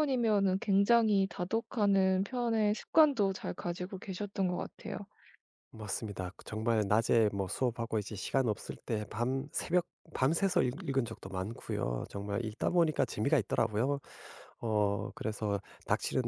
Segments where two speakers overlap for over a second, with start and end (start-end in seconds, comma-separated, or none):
none